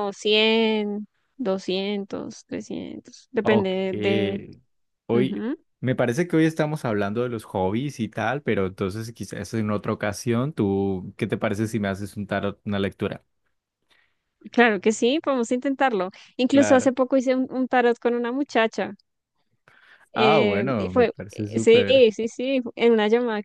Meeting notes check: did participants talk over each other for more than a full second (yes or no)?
yes